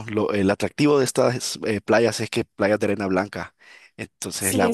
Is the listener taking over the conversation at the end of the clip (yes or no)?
yes